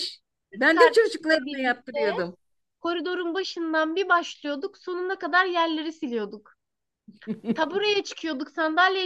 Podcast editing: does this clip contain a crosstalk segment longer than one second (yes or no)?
yes